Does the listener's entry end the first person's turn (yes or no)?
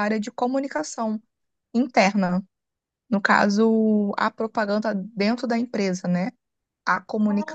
no